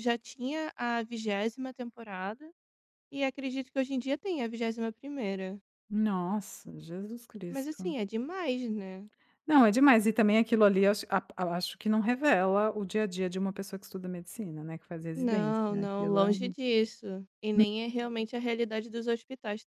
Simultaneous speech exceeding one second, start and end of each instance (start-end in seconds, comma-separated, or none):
15.1-16.6